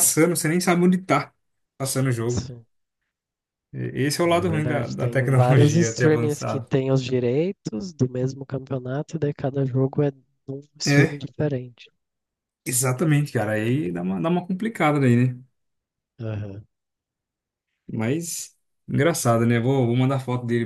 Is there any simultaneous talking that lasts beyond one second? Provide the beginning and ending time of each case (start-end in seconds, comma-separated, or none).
4.2-6.7